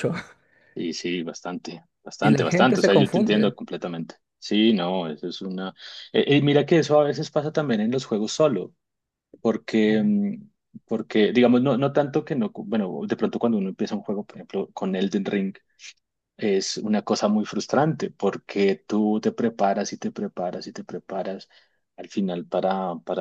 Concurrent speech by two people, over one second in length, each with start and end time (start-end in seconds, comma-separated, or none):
2.2-3.5